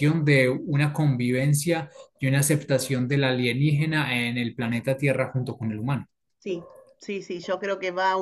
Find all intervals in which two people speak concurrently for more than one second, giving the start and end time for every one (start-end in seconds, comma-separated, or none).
none